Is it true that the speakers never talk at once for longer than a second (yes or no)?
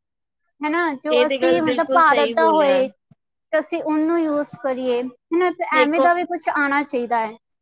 no